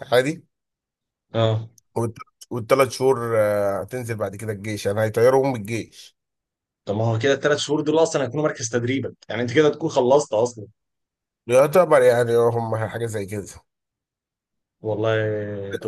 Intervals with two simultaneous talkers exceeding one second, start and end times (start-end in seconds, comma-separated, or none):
none